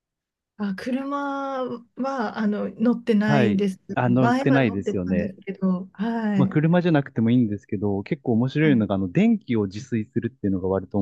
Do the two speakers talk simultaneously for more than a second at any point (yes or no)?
yes